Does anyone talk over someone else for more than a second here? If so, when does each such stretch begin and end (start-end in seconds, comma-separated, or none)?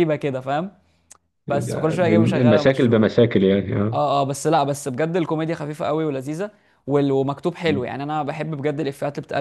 1.5-3.0